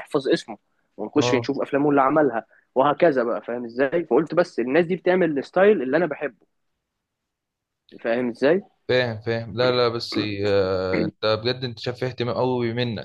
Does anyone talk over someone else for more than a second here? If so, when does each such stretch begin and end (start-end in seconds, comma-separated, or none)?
none